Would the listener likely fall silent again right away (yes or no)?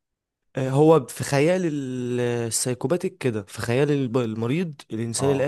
yes